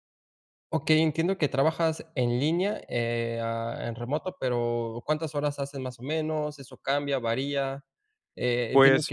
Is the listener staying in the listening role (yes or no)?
yes